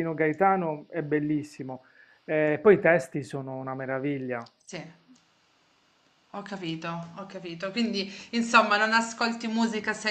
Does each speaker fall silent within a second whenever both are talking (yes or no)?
yes